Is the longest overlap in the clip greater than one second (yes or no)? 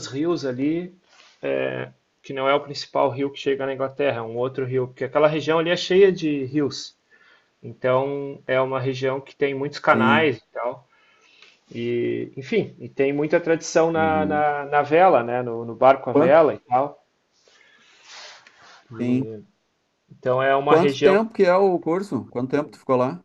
no